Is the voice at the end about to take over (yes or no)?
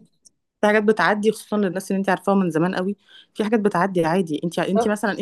no